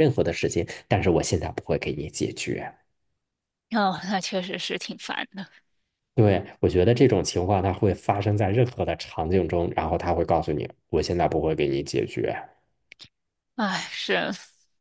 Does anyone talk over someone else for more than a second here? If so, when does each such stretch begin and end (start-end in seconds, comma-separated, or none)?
none